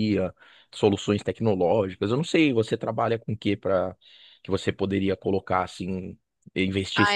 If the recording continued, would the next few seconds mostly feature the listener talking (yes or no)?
yes